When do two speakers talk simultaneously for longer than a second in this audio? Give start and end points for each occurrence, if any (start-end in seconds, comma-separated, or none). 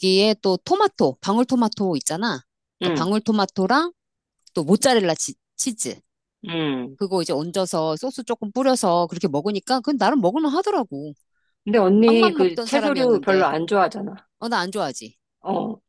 12.1-13.5